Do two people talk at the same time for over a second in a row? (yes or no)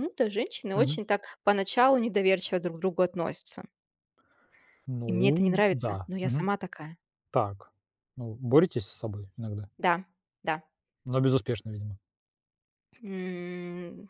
yes